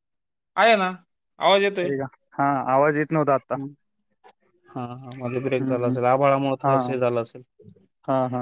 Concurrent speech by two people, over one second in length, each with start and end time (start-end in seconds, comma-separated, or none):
none